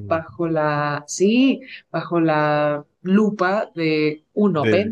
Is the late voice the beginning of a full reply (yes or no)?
no